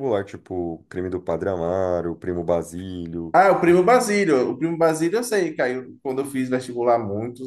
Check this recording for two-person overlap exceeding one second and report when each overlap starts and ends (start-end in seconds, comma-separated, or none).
none